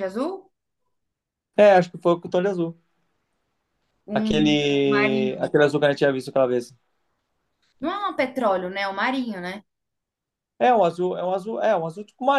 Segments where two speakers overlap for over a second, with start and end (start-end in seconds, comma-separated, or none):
4.1-5.6